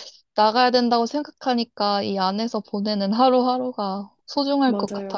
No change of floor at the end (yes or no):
no